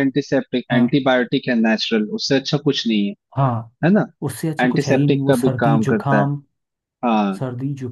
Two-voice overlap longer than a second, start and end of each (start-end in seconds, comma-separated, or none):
4.6-6.2